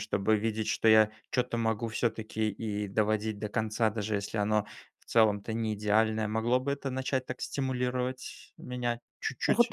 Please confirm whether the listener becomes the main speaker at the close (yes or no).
yes